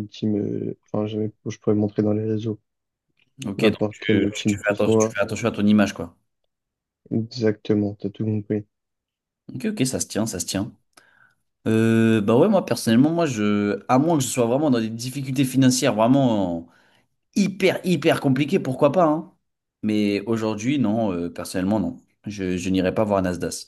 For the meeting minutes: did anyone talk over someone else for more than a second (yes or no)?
yes